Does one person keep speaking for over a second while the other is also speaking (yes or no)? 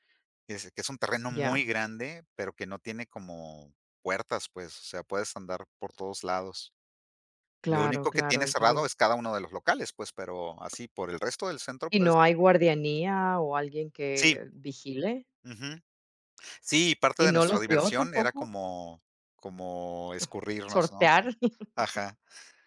yes